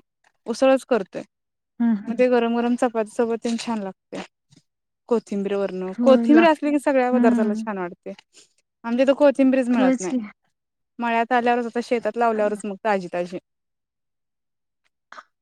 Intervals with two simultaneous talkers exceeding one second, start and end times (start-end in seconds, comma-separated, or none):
6.0-7.6